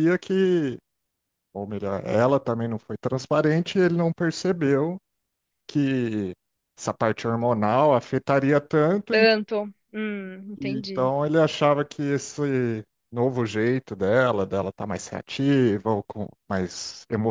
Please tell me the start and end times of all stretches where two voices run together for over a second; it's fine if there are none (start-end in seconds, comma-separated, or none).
none